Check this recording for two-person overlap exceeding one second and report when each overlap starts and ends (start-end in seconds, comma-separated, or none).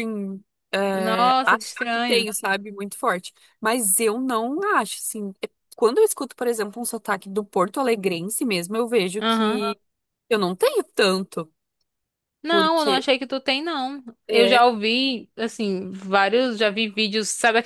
0.9-2.3